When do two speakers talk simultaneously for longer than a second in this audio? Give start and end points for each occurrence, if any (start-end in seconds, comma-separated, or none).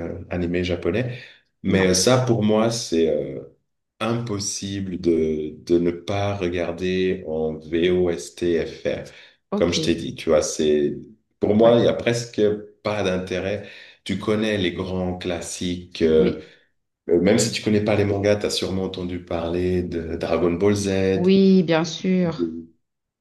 none